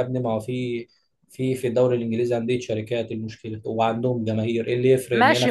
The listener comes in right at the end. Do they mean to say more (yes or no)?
yes